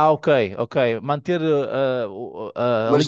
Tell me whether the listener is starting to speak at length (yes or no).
yes